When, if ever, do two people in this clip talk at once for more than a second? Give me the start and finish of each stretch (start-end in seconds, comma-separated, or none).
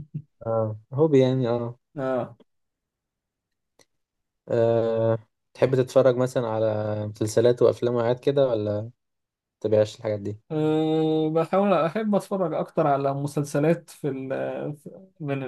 none